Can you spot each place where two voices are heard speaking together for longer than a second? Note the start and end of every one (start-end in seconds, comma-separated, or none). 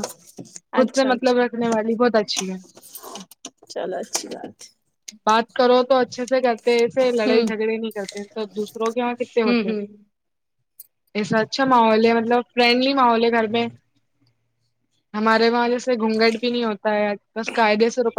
none